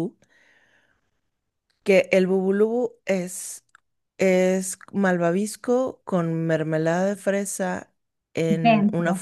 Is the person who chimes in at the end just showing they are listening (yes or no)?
yes